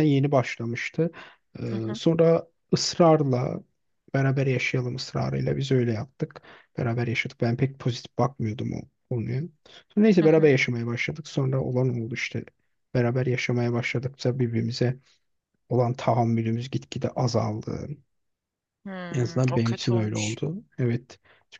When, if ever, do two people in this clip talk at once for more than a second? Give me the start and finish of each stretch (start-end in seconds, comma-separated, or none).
19.1-20.4